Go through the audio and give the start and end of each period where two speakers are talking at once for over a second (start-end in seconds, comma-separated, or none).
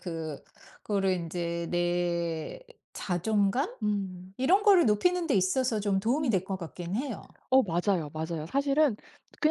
none